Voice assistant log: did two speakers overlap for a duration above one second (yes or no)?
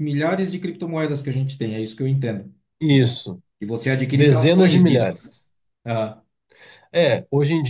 yes